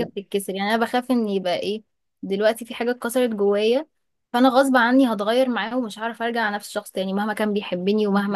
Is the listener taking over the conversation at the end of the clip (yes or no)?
no